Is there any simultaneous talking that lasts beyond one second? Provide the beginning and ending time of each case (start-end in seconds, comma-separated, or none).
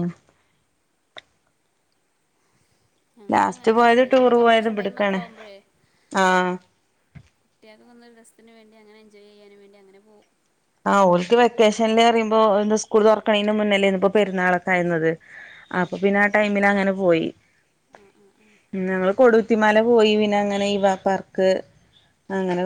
3.3-5.2